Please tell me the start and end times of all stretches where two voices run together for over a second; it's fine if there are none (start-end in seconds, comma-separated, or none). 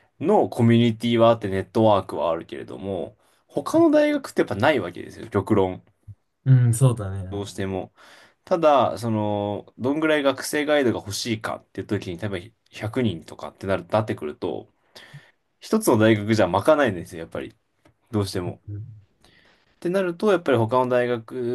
none